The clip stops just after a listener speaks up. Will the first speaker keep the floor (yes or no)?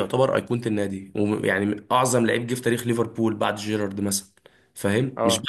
yes